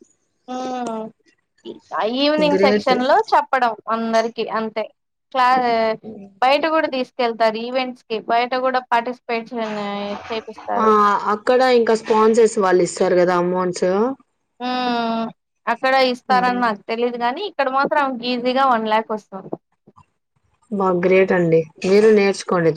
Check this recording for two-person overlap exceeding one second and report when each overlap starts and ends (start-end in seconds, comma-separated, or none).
none